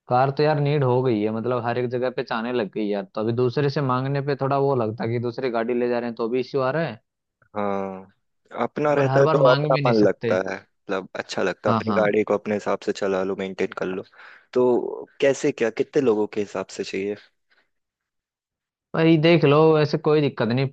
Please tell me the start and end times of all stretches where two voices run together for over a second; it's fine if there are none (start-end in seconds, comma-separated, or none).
9.0-10.4